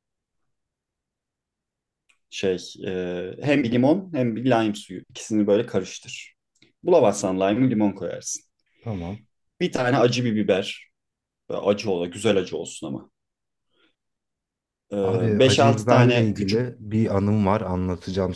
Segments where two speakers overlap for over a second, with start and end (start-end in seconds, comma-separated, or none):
15.4-16.7